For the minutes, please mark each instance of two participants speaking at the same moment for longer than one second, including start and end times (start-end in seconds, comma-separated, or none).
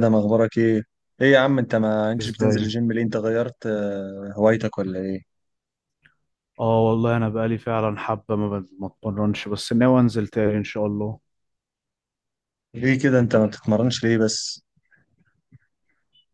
none